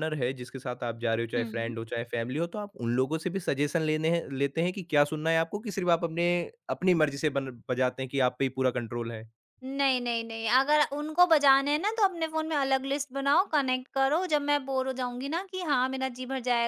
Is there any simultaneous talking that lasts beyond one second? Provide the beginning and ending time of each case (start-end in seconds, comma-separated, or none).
none